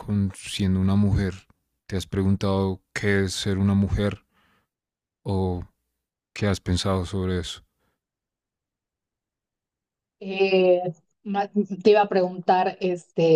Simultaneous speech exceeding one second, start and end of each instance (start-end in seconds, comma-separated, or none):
none